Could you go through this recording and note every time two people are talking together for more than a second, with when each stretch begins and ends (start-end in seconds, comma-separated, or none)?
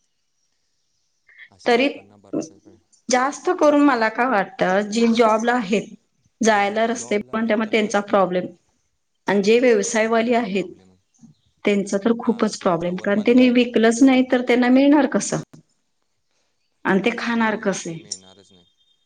6.5-8.2, 12.2-13.7